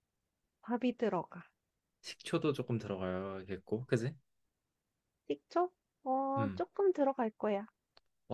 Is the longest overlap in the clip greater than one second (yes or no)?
no